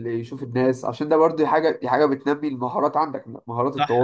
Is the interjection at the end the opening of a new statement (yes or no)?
yes